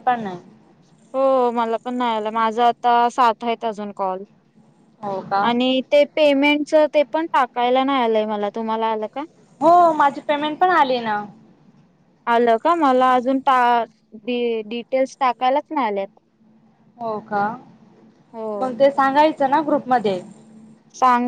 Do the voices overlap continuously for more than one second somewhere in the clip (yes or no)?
no